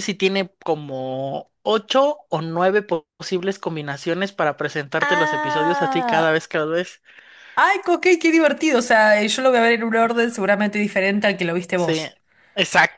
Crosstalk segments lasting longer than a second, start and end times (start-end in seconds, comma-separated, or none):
5.0-6.4